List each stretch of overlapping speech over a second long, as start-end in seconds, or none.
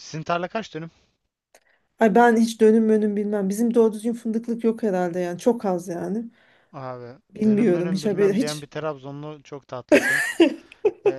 7.3-8.7